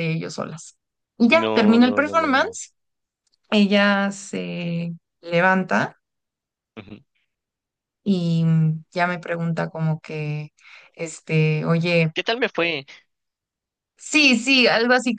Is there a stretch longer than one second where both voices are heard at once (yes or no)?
yes